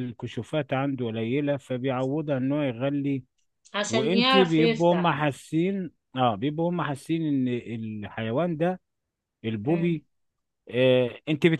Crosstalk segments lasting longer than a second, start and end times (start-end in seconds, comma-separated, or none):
3.9-5.2